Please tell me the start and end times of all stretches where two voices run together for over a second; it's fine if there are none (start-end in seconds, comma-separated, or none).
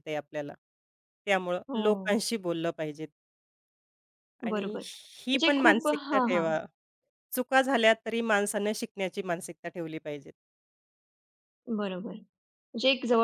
4.5-6.5